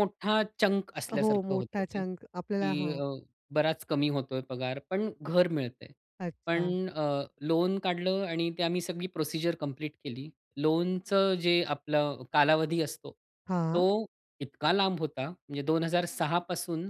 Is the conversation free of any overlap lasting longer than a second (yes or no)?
no